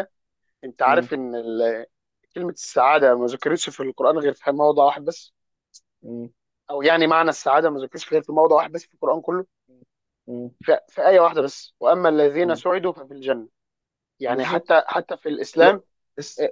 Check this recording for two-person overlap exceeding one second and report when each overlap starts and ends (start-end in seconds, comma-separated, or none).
none